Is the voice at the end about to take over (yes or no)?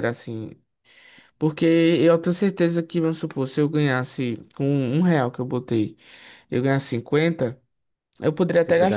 no